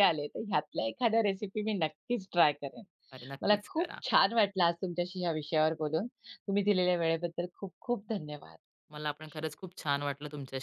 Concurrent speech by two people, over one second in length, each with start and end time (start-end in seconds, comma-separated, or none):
none